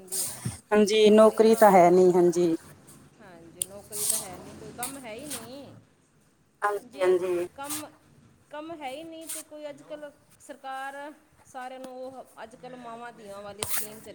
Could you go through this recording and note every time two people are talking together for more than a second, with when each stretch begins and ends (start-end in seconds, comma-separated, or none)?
0.9-2.2